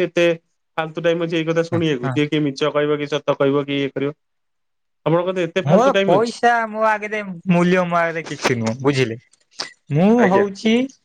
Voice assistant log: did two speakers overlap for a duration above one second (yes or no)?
no